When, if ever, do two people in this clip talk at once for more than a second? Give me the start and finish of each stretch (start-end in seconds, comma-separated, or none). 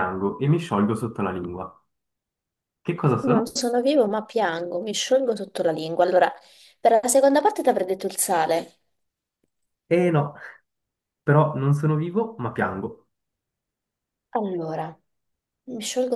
none